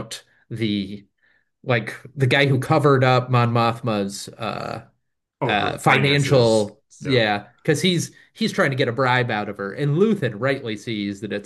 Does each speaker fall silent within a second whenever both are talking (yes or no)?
no